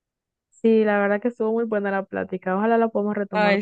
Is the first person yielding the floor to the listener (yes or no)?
yes